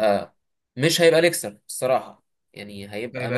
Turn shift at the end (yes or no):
no